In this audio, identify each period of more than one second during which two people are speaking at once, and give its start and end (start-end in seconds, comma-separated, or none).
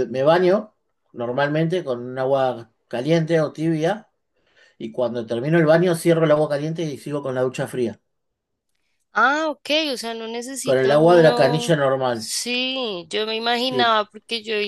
10.6-12.3